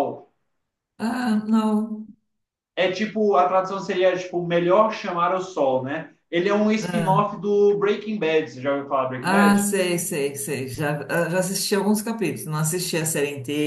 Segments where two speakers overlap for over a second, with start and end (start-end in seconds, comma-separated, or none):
none